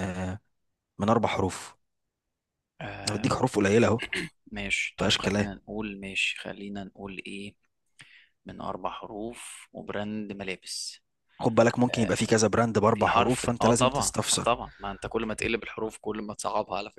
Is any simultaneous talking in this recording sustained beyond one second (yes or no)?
yes